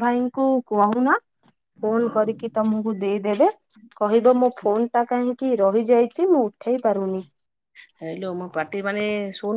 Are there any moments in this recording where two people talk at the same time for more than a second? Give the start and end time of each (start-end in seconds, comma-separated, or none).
none